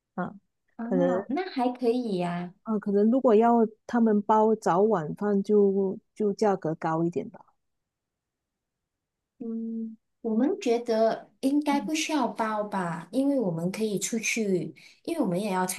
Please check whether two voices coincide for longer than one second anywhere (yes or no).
no